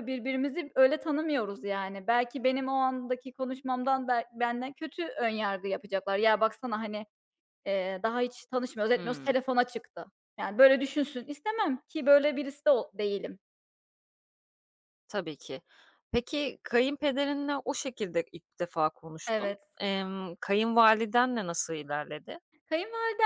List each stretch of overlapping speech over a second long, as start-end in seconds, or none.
none